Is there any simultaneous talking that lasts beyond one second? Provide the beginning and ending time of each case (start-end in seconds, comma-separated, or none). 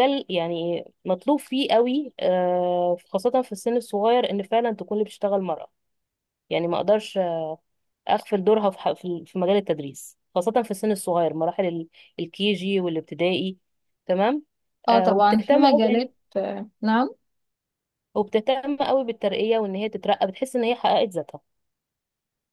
14.9-16.1